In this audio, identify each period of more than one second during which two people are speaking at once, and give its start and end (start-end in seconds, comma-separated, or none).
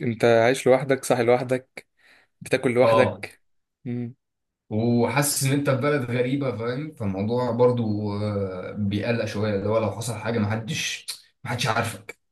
none